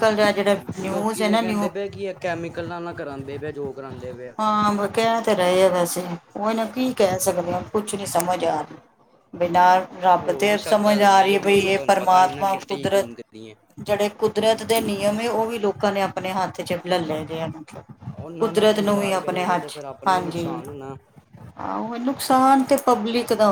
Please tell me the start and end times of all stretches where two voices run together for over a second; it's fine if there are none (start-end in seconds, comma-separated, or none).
10.2-13.1, 18.4-20.5